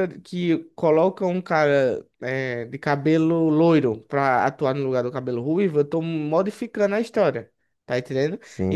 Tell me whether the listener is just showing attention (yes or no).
yes